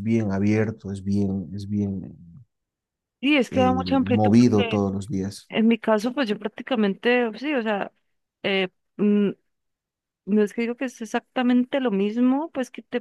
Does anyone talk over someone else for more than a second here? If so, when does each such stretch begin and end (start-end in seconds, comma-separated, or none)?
3.5-4.8